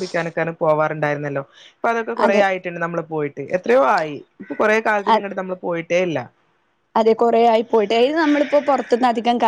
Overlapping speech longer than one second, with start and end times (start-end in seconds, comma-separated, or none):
none